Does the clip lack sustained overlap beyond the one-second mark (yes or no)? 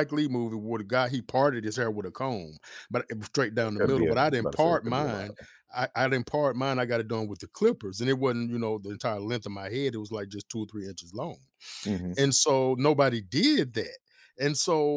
no